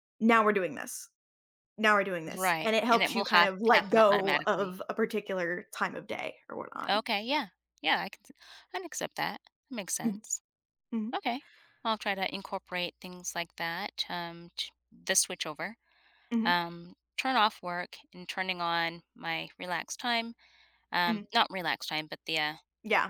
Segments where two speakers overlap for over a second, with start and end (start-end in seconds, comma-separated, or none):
2.4-4.8